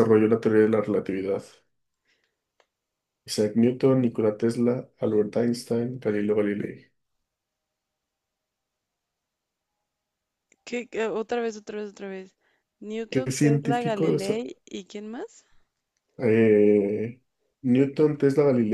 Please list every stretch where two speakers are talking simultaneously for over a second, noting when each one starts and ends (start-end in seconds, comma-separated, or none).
13.1-14.3